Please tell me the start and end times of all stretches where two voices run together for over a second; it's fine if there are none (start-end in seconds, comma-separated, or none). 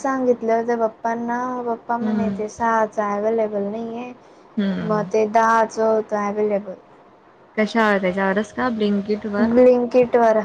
none